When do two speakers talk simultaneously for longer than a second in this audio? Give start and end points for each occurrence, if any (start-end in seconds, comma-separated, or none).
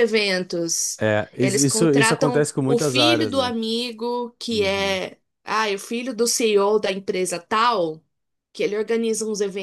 1.4-3.5